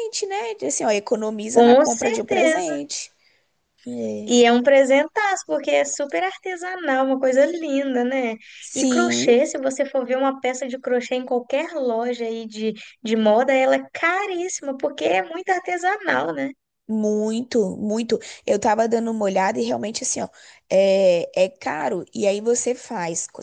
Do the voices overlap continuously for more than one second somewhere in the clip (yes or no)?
yes